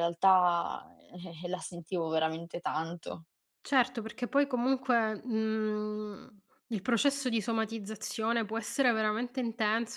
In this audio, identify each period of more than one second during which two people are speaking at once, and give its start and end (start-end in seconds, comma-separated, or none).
none